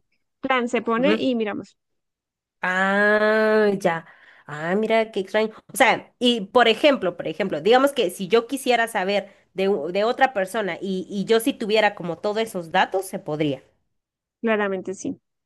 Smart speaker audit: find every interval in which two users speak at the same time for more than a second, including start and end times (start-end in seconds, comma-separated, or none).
none